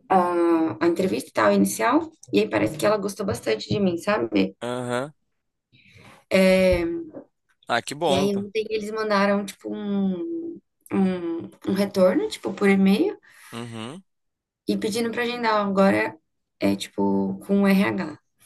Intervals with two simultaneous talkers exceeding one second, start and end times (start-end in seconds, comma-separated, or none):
none